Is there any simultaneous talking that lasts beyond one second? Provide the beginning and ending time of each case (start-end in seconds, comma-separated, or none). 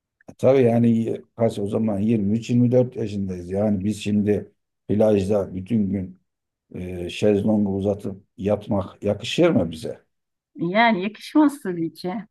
none